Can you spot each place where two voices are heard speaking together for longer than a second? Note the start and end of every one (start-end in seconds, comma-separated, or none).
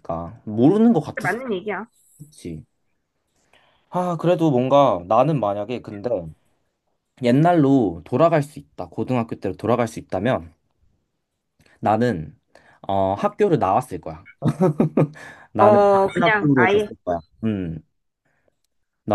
15.6-16.9